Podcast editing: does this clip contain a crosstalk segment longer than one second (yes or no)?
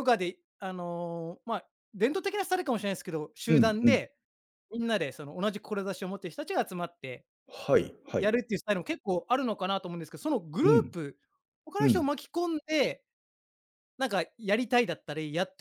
no